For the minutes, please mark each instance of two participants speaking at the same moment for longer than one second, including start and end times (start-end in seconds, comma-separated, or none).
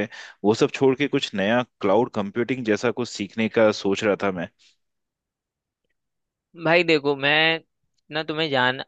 none